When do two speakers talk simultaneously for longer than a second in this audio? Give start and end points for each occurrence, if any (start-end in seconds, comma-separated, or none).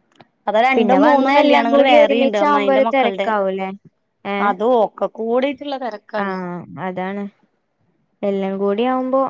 0.8-3.3